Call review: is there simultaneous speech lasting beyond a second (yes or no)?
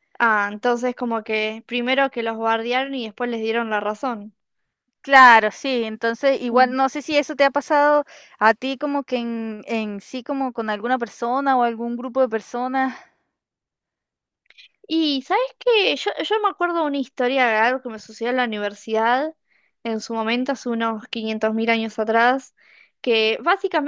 no